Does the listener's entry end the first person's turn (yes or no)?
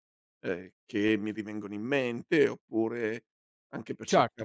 no